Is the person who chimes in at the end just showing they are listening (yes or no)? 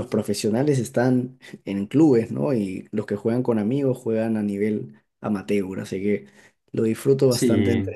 yes